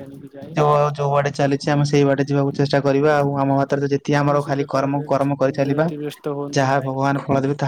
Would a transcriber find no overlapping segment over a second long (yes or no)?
no